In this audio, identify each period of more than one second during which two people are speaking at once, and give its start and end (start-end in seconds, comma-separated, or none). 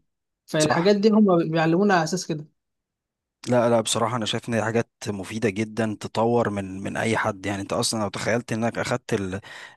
none